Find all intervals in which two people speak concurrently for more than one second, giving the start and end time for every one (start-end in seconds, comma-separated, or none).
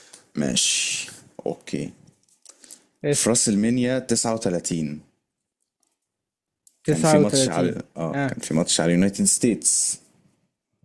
6.9-8.3